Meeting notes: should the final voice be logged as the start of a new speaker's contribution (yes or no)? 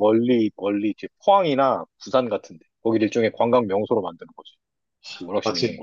yes